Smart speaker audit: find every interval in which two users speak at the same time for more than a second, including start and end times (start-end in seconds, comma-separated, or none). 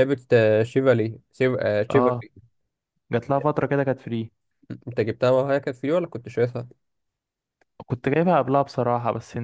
none